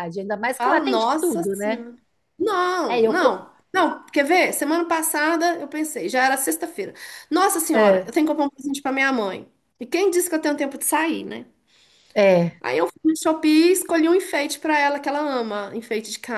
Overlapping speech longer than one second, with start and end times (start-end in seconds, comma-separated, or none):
0.5-1.8